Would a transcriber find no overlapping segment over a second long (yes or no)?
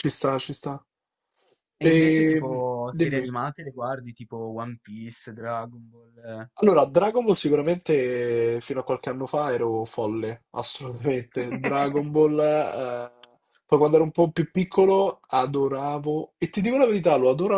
no